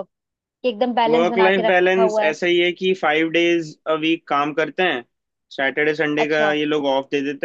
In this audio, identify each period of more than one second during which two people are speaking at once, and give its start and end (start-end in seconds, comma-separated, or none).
1.1-2.4